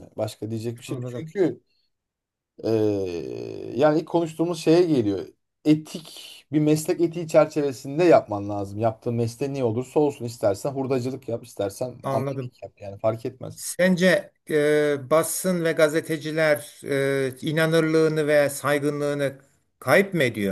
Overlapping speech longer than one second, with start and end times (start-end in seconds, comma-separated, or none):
none